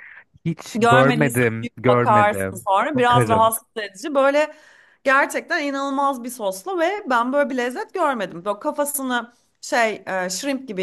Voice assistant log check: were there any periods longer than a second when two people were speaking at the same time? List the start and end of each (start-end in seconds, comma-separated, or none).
0.8-3.5